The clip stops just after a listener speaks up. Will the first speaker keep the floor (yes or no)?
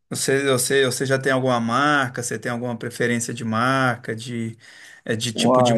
yes